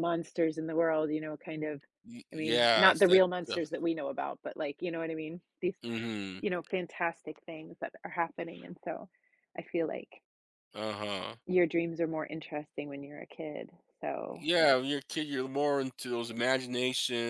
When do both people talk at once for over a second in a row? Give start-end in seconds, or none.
2.3-3.6